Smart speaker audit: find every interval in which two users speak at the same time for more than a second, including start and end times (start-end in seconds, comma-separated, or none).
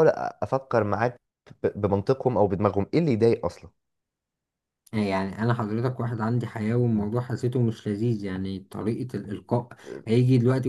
none